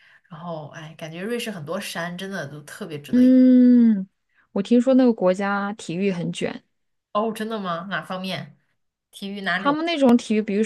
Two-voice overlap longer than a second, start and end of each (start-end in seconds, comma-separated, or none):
none